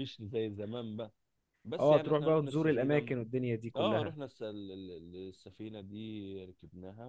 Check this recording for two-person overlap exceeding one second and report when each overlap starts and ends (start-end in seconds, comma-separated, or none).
1.8-3.1